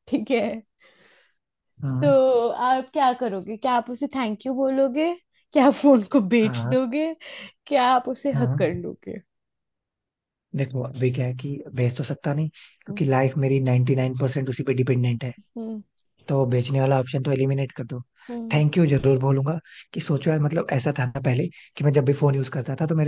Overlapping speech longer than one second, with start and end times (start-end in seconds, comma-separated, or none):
none